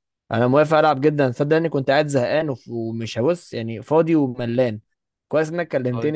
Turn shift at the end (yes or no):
no